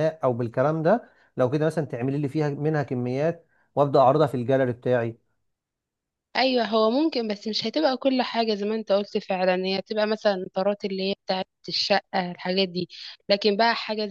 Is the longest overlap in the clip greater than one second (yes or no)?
no